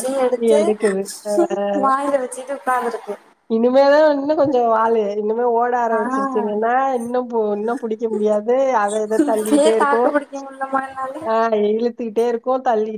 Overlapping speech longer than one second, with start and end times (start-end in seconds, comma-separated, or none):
none